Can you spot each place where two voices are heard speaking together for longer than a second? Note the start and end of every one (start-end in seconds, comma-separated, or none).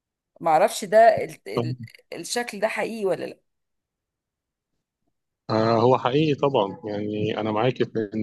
none